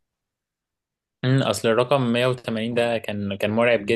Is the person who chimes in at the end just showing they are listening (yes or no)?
no